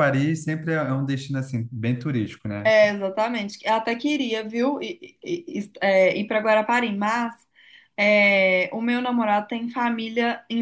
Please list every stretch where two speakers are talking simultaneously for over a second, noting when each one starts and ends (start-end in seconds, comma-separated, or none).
none